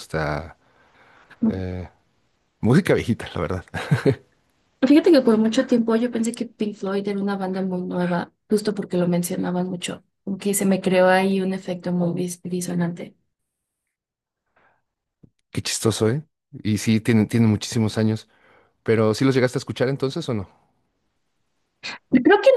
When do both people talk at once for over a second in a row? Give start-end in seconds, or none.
none